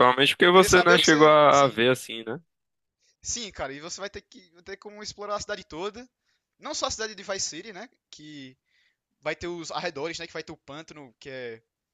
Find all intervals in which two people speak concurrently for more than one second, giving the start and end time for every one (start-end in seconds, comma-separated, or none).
0.5-1.8